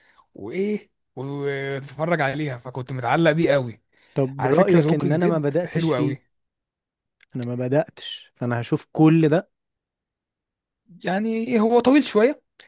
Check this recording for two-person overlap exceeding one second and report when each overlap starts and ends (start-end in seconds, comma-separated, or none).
4.4-6.2